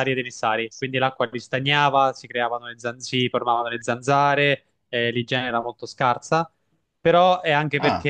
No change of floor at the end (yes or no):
yes